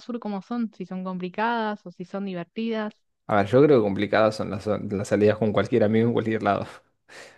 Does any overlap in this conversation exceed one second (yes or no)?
no